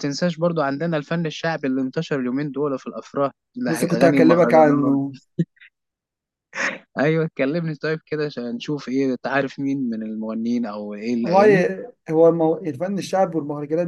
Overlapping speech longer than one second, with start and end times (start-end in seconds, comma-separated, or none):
3.7-5.0